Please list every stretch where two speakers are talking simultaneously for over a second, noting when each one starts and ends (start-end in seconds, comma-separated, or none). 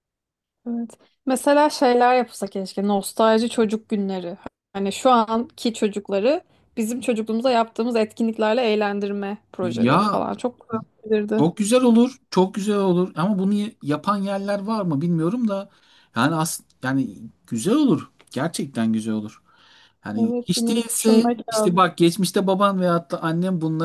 20.1-21.8